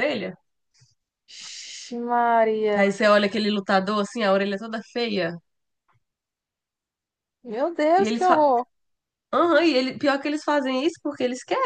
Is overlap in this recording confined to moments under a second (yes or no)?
yes